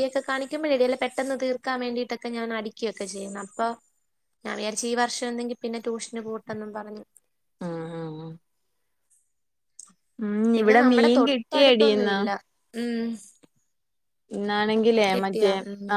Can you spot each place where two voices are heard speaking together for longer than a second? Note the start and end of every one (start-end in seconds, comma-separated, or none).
10.6-12.2